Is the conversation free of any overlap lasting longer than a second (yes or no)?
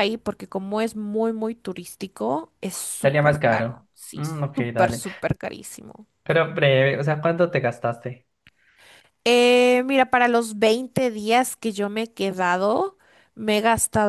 no